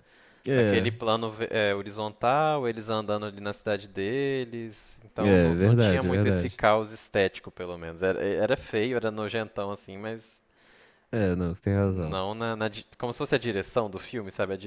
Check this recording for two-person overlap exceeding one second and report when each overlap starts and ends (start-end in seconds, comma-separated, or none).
5.2-6.6